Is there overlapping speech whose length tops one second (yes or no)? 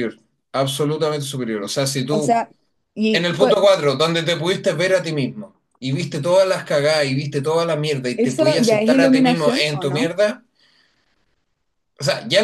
yes